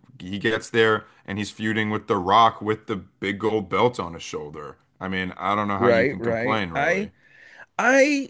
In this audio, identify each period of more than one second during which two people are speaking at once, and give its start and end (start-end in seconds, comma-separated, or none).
5.8-7.1